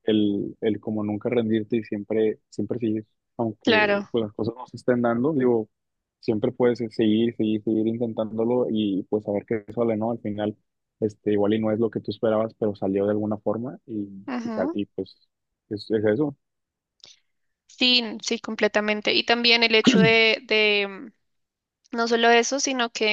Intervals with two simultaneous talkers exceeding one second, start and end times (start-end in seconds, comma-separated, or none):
none